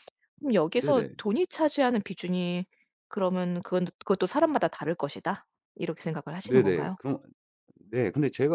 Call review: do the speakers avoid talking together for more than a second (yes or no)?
yes